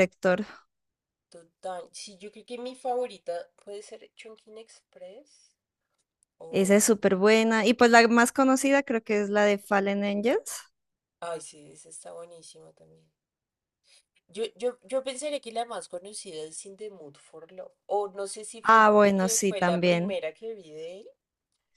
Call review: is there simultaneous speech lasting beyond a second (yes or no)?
yes